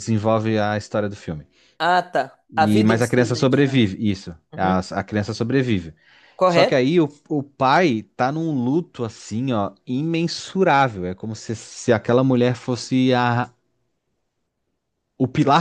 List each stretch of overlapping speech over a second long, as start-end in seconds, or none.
2.6-3.8